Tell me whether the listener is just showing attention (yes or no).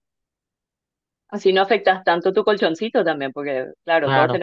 yes